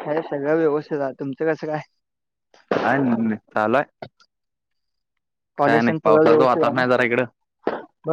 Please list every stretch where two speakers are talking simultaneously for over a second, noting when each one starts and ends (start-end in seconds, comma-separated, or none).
6.0-7.2